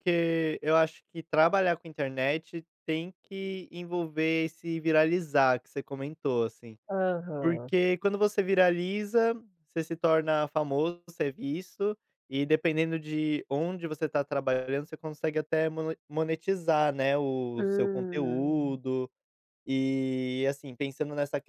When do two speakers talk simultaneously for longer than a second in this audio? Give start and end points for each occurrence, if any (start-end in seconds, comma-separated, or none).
17.6-18.8